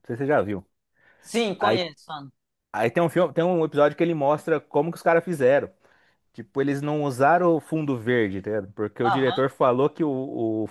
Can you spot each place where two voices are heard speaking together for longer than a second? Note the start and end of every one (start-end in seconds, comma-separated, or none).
none